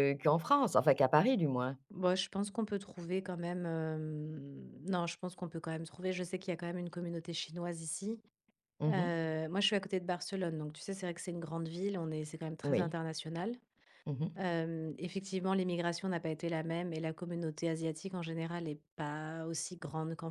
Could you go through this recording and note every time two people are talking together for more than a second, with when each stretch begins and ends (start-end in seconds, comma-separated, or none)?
none